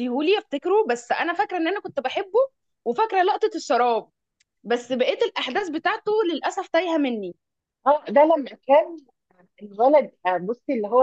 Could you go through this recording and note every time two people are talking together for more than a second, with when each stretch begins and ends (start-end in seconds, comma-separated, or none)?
none